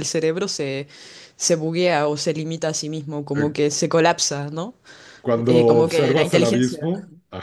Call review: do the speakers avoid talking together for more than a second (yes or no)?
no